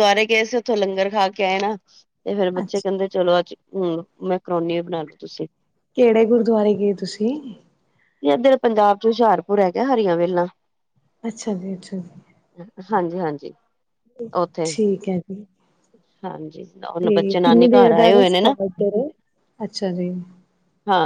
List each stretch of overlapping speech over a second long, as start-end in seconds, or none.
17.0-18.5